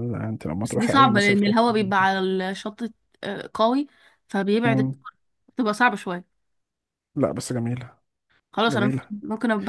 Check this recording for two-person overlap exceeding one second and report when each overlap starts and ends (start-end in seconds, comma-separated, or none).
0.6-2.0